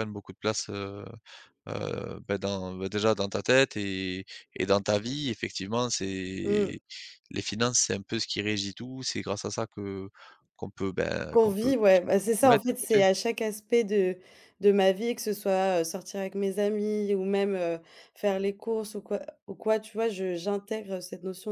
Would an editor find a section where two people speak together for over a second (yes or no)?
yes